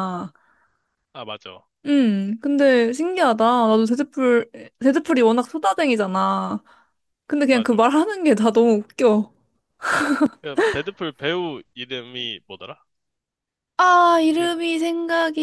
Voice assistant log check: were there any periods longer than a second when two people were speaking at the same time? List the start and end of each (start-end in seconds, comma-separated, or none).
none